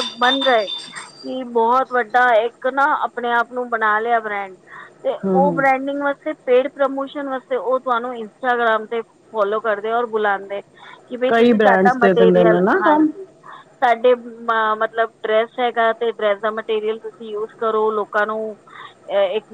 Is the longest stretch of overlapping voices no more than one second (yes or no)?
no